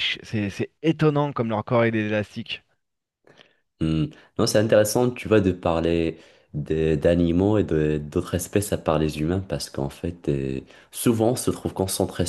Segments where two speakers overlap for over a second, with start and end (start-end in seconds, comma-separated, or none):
none